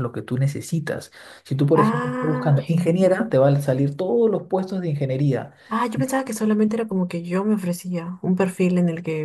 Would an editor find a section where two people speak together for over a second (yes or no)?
yes